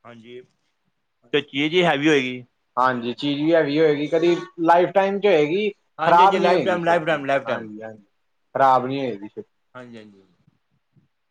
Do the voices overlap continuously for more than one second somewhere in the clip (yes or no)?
yes